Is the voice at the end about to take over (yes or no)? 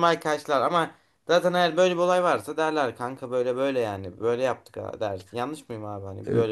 yes